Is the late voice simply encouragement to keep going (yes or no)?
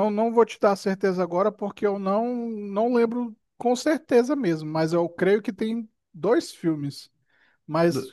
yes